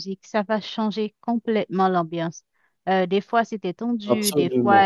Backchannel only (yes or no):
yes